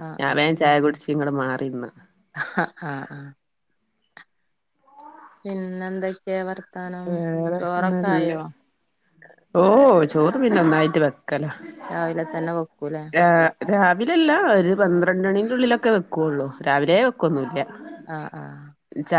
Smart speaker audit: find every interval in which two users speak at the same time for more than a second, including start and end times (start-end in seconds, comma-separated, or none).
none